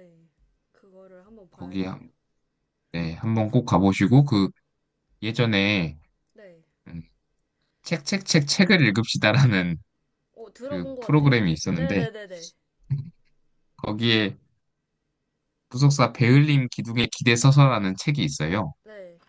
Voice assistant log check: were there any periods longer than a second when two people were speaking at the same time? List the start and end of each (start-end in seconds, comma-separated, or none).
10.6-12.1